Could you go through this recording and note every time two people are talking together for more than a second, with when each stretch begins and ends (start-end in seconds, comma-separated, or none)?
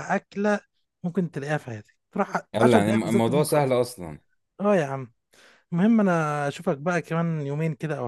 2.5-3.8